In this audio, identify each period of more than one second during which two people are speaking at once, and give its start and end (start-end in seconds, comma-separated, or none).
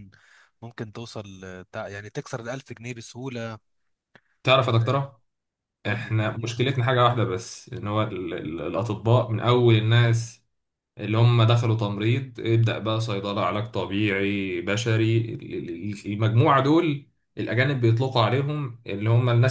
none